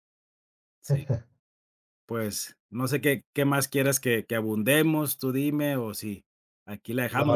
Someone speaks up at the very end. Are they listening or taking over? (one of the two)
listening